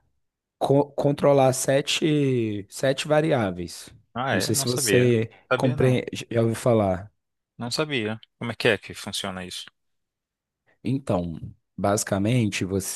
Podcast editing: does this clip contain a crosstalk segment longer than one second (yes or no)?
yes